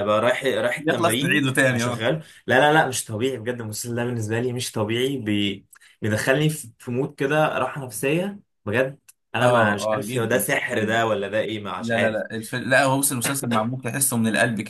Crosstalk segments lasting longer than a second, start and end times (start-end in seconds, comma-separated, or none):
0.8-2.1, 9.4-11.0